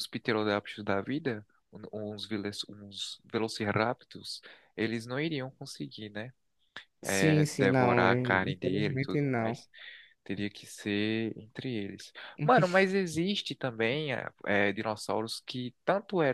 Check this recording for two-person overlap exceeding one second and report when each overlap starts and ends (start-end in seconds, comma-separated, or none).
7.0-9.6